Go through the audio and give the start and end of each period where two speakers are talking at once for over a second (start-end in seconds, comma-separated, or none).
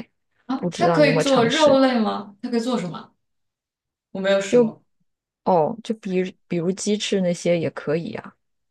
0.5-1.8